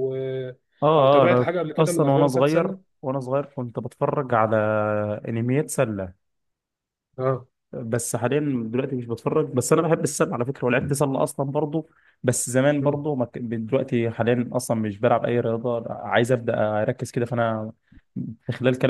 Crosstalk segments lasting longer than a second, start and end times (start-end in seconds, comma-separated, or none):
1.0-2.8